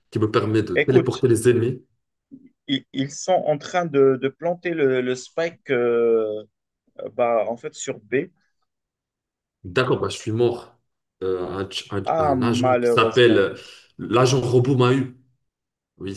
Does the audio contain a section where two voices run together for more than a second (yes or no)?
yes